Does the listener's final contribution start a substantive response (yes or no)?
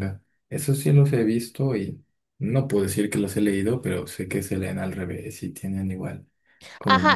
yes